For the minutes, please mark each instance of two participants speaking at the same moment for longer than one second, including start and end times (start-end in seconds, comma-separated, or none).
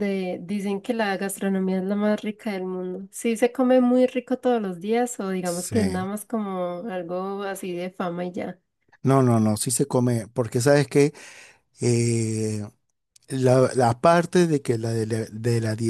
none